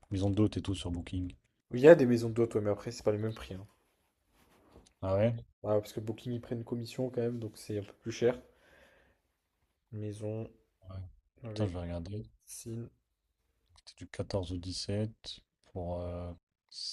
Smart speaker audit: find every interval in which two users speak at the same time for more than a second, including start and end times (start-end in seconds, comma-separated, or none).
none